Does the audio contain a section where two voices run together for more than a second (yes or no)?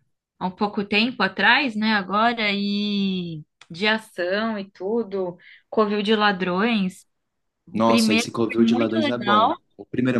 yes